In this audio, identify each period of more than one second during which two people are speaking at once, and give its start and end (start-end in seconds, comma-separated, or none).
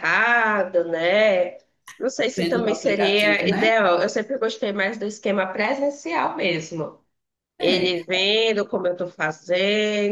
2.4-3.7